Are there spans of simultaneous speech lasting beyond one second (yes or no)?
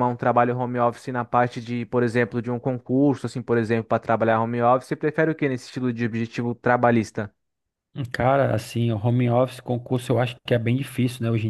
no